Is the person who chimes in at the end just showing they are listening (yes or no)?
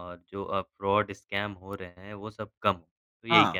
no